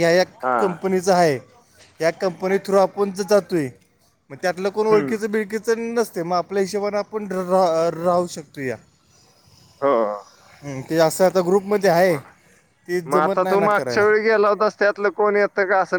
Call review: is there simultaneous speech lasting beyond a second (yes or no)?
no